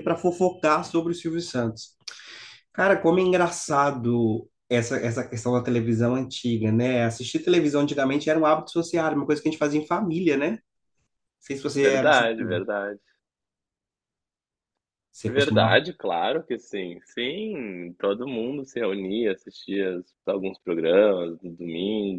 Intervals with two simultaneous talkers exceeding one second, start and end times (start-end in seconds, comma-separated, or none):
none